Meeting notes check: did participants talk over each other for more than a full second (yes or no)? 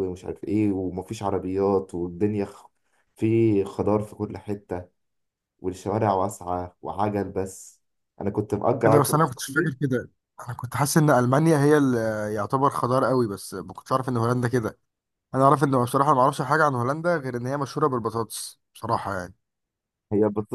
no